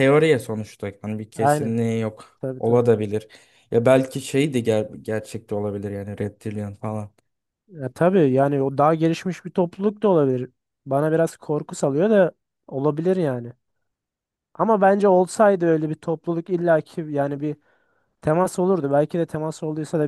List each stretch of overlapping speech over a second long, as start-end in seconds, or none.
none